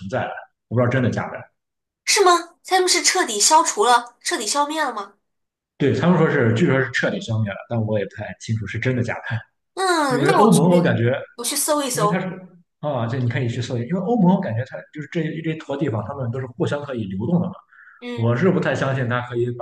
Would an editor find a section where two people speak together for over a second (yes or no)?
no